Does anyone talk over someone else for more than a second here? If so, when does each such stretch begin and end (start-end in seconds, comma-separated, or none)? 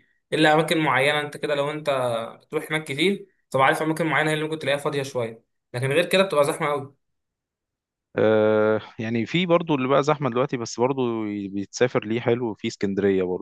none